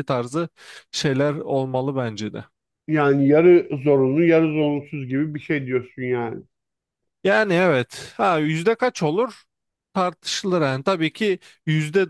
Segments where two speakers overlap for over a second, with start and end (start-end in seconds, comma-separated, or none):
none